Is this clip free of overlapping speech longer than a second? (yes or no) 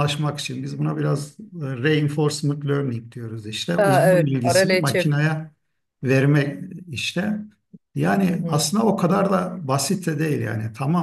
no